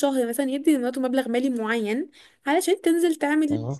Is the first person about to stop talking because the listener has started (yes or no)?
no